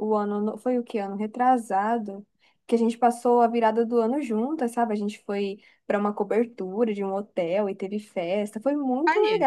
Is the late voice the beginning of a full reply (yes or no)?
no